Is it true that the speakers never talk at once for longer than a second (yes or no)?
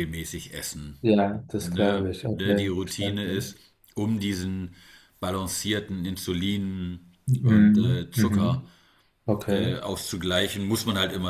no